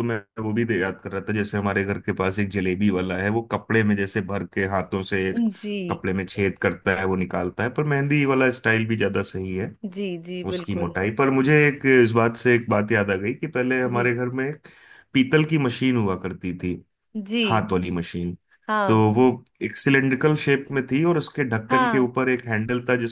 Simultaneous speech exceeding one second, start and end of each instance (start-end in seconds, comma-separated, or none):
none